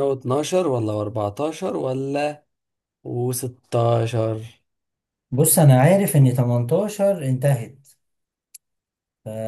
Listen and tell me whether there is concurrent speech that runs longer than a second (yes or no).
no